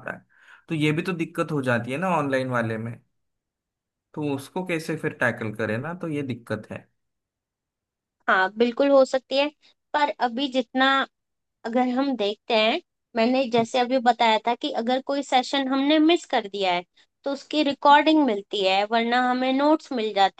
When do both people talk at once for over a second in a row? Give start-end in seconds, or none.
none